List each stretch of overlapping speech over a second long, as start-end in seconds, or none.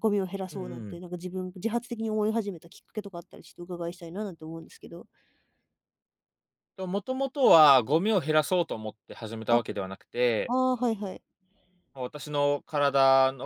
none